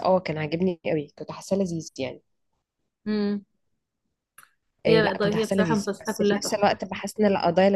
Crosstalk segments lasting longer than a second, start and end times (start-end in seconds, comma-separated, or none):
4.9-6.7